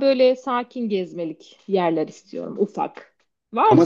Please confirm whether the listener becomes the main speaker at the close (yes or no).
yes